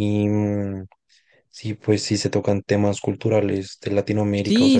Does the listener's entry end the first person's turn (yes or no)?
yes